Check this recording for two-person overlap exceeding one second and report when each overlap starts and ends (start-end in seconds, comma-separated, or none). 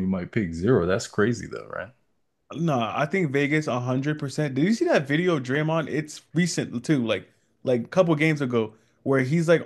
none